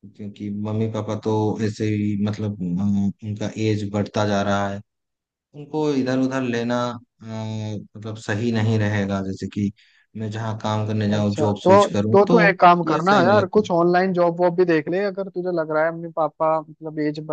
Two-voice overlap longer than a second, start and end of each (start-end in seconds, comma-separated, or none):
11.1-13.7